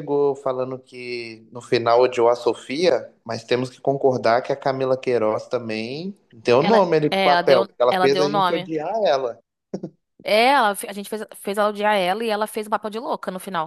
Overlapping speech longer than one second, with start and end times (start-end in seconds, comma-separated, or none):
6.6-8.7